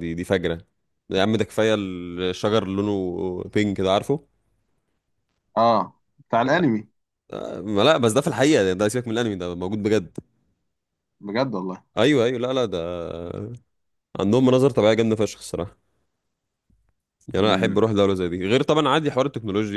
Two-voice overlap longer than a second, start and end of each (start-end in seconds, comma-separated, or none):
none